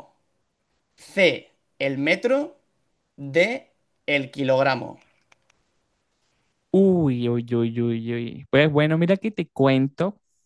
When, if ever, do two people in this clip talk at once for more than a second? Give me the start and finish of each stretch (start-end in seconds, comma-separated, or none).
none